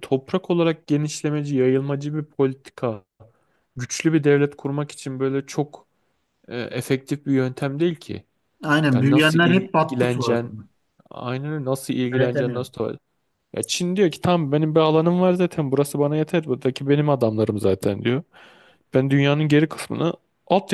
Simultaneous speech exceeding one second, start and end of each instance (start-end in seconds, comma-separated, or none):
8.9-10.5